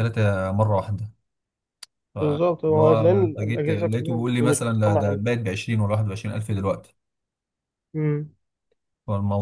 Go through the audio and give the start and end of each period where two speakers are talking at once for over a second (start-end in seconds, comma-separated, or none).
2.2-5.2